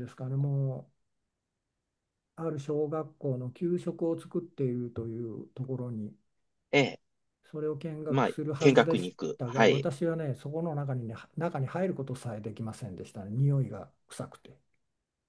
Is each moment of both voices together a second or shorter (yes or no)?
no